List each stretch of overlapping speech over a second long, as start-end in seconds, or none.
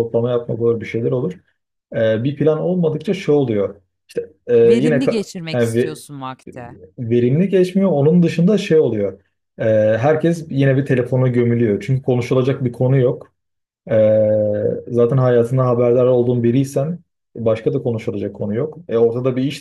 4.6-6.0